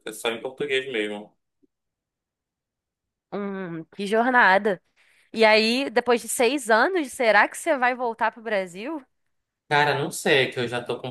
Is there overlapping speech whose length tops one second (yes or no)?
no